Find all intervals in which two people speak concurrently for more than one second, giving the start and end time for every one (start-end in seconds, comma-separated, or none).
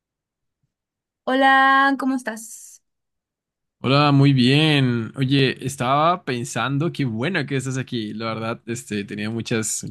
none